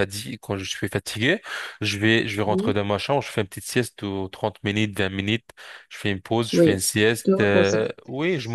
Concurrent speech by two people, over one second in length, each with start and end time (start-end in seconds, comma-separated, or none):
6.5-7.8